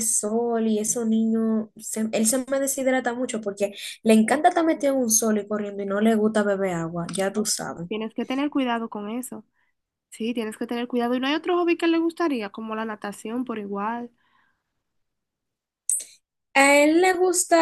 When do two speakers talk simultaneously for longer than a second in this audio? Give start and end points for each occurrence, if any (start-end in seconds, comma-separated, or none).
none